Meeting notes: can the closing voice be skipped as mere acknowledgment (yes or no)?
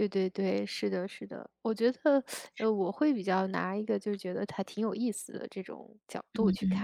no